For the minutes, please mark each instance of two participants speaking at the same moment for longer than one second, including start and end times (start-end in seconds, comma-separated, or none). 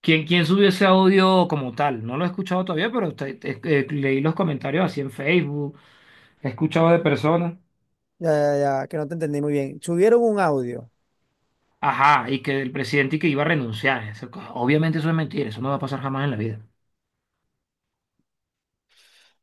none